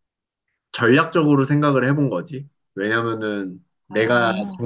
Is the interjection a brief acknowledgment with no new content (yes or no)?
yes